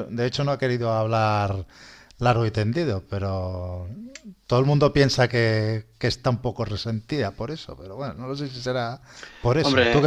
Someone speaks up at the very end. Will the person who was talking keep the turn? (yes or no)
no